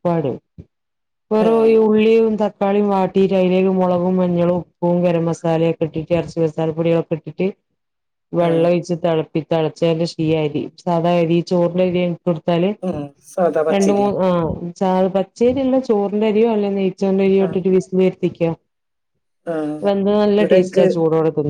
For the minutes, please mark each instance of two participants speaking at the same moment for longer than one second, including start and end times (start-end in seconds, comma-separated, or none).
none